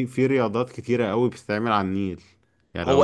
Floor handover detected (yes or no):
yes